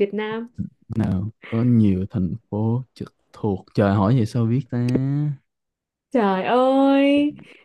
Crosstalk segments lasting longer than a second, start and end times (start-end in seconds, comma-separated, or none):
none